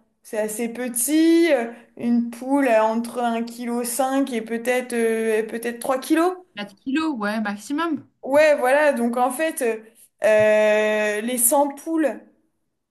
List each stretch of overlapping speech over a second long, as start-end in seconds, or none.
none